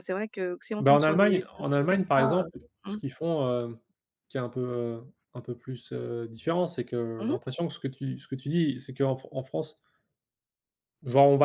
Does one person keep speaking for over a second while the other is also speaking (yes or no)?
yes